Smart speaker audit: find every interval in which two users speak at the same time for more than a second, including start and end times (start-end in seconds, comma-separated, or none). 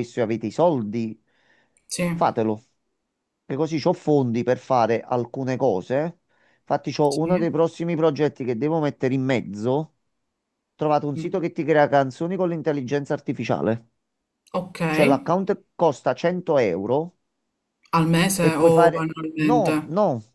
18.3-19.7